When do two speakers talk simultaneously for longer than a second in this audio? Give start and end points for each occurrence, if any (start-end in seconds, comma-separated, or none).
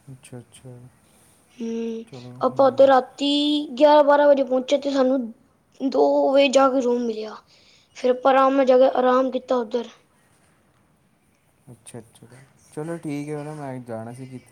none